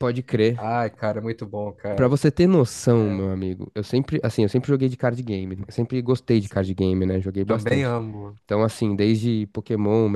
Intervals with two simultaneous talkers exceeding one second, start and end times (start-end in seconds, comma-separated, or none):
none